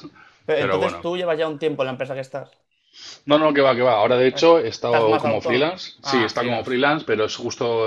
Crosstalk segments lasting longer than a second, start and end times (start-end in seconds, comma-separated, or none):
4.8-6.8